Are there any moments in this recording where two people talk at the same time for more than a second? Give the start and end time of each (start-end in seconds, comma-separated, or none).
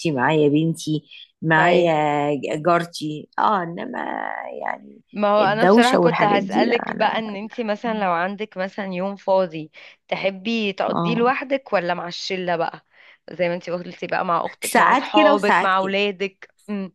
5.4-7.1, 14.6-16.0